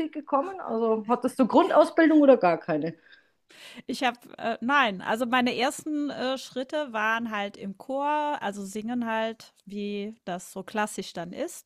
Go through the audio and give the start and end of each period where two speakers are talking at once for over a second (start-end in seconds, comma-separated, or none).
none